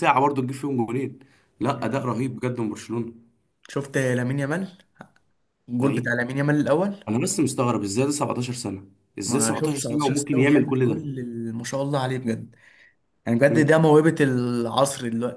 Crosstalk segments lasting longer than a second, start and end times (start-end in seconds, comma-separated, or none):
9.2-11.0